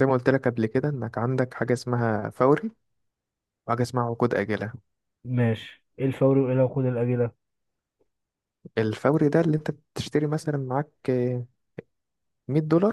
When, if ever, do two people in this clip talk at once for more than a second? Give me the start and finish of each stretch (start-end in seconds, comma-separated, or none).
none